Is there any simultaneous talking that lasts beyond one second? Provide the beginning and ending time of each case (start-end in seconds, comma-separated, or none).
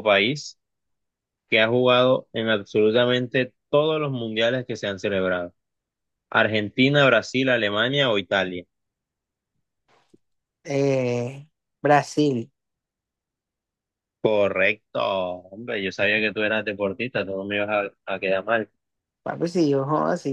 none